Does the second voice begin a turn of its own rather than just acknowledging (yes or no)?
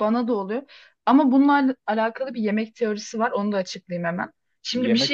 no